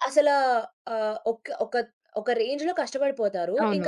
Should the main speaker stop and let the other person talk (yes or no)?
no